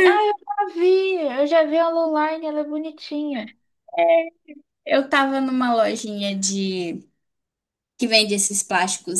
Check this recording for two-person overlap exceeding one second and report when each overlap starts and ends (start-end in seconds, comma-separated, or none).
none